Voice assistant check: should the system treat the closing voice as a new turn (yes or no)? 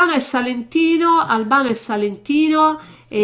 no